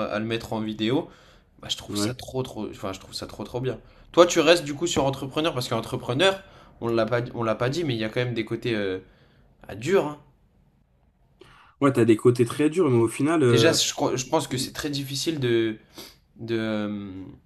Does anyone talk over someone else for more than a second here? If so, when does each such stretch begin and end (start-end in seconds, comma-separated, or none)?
none